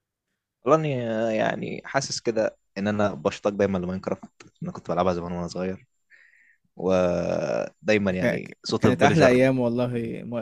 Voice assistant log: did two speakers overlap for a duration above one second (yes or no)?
yes